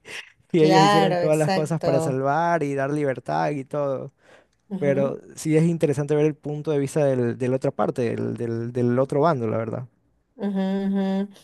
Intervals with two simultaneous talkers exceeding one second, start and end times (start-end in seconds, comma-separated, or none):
0.6-2.2